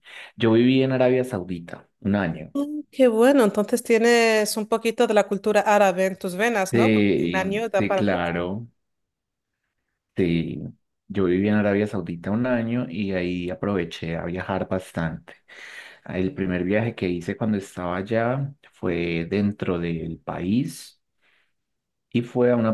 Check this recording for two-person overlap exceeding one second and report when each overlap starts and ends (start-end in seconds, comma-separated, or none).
6.7-8.3